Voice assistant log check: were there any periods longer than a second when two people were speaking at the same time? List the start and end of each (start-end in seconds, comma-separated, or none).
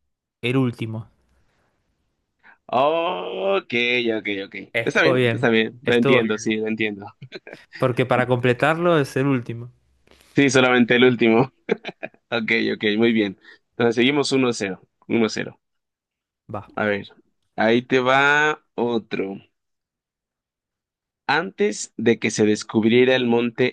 4.7-6.5